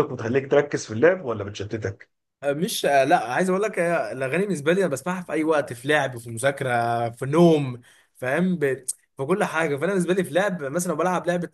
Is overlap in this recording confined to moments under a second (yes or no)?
yes